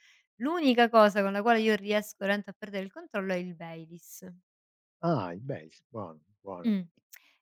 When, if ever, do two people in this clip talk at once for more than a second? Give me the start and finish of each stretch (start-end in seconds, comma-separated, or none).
none